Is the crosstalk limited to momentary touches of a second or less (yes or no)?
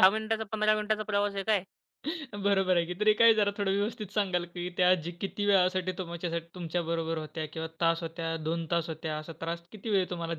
yes